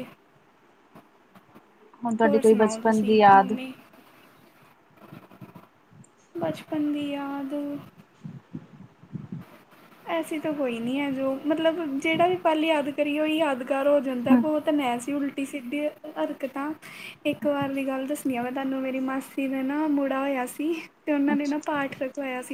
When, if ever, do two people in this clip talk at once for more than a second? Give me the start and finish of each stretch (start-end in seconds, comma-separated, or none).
2.2-3.5